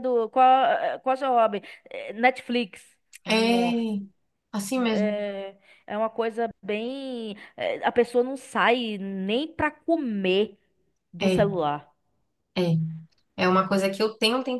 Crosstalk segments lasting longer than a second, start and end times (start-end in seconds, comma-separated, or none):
none